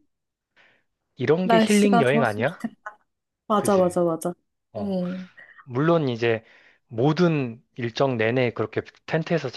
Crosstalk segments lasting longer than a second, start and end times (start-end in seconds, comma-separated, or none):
1.4-2.6